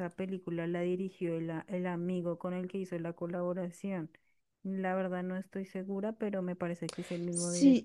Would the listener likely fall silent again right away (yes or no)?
no